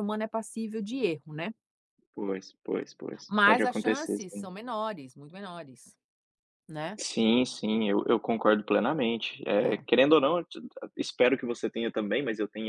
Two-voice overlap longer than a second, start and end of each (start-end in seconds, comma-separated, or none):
3.3-4.5